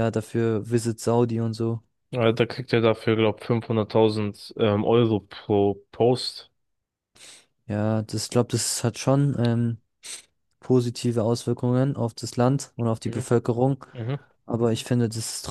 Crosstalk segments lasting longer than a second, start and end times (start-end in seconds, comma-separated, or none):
none